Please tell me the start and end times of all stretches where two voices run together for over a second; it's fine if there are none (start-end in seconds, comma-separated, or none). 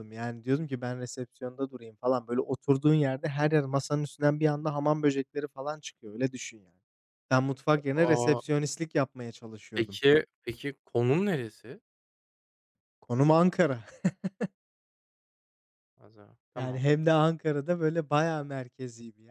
none